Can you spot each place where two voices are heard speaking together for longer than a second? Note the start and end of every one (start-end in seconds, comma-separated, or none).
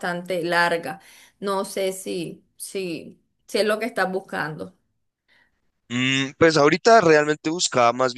none